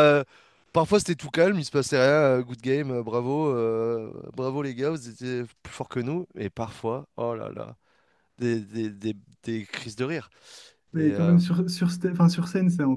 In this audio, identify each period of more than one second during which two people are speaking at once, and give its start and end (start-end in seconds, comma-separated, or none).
none